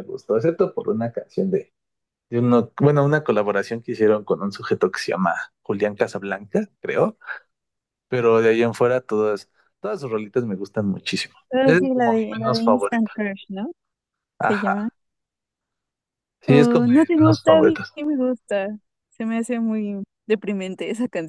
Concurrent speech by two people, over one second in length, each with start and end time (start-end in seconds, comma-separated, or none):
11.5-13.1, 16.5-17.9